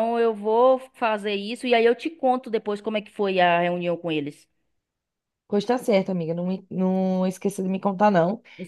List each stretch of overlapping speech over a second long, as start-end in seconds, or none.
none